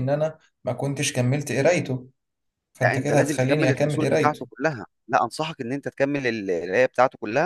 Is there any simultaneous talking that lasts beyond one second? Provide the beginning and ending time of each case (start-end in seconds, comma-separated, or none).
2.8-4.4